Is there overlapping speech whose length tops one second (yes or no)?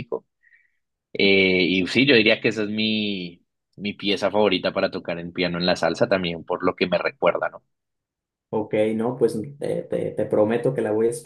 no